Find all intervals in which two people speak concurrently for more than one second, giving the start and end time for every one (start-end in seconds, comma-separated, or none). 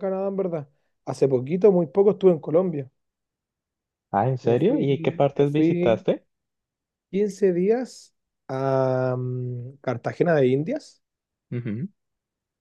4.4-6.0